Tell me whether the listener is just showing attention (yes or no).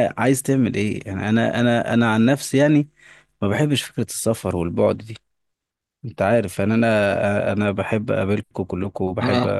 no